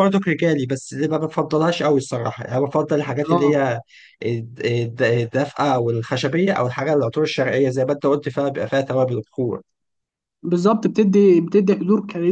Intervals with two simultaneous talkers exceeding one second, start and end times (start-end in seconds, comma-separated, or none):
none